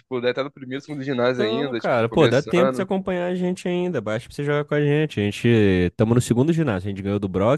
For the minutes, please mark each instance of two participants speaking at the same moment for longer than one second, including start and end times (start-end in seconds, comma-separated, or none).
1.3-2.9